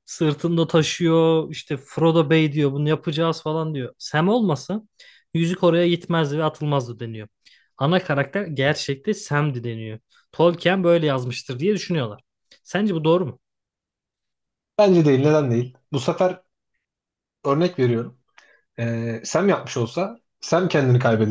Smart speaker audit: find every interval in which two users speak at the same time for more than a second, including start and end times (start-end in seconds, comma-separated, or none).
none